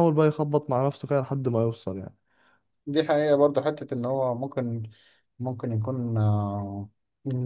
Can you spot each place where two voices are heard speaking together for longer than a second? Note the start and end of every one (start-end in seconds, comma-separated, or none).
none